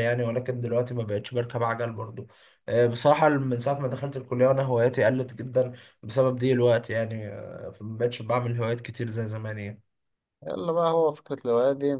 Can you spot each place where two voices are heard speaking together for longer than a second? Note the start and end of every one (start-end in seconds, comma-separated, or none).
none